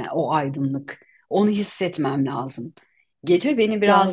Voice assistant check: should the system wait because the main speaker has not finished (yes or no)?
yes